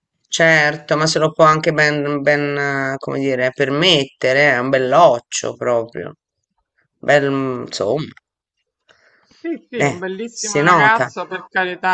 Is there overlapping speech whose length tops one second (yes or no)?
yes